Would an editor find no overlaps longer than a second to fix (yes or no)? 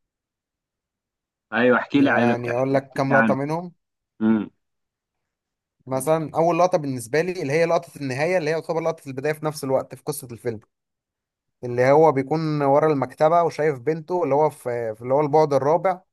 no